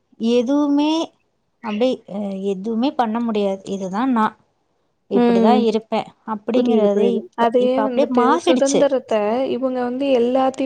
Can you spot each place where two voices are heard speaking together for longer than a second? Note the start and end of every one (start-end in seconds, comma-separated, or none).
6.5-8.8